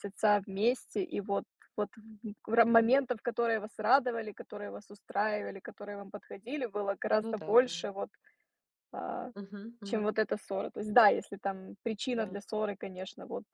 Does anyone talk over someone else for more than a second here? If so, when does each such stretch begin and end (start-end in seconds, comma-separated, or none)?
none